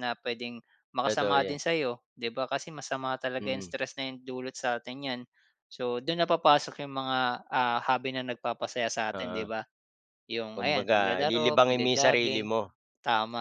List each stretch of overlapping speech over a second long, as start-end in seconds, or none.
10.6-12.5